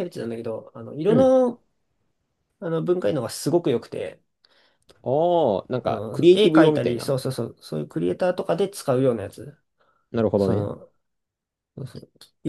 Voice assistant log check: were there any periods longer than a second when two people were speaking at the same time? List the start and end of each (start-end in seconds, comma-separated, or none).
5.8-7.1